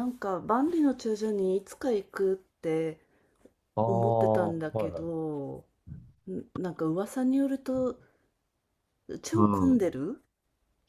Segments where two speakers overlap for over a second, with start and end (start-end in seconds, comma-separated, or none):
3.9-5.3